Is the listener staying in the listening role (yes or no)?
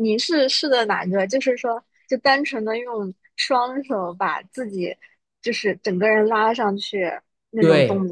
no